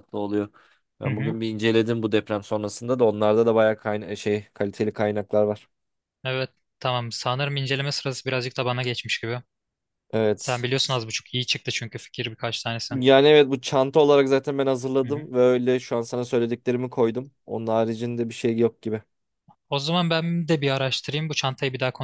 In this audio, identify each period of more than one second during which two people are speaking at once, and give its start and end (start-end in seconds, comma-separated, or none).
none